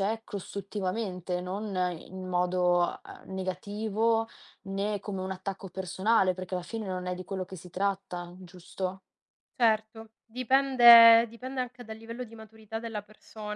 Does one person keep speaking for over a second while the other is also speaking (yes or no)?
no